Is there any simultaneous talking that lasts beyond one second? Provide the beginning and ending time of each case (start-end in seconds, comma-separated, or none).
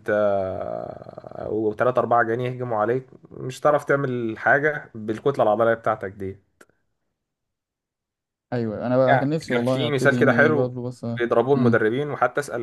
9.1-10.7